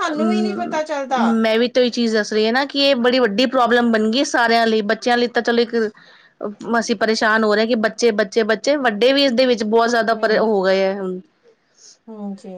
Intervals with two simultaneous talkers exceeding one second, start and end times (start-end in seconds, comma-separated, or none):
none